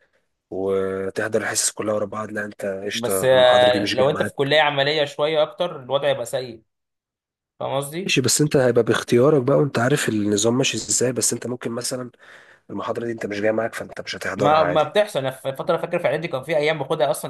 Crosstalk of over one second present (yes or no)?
yes